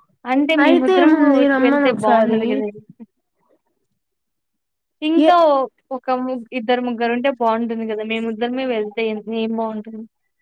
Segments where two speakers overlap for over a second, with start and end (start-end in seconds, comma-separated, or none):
0.6-2.4